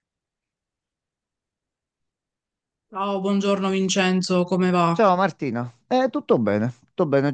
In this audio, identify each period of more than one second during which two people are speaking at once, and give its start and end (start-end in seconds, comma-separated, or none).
none